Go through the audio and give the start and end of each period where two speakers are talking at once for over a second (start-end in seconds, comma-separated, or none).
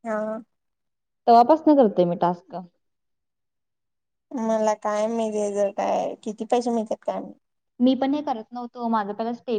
none